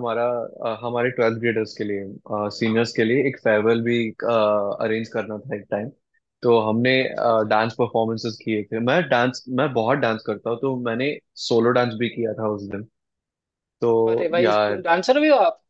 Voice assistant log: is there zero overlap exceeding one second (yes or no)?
yes